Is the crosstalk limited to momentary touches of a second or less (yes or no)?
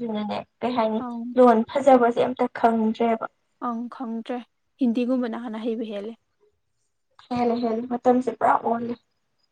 yes